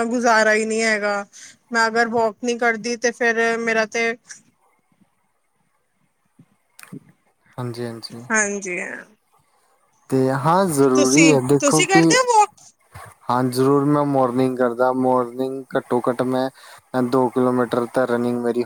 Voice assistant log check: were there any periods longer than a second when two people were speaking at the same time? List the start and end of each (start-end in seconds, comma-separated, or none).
none